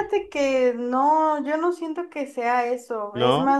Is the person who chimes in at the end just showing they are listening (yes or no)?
yes